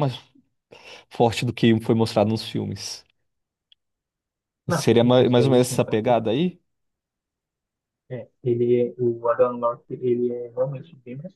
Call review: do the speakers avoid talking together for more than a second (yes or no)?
no